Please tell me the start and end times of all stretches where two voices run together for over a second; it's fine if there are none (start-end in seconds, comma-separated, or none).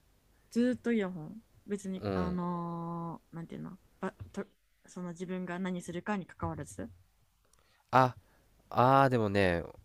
none